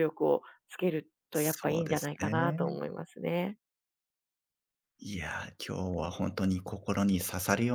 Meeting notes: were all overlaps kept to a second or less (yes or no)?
no